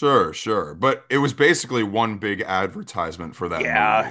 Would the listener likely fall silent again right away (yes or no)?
no